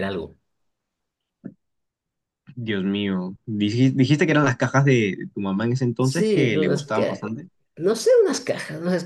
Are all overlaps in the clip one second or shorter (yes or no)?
no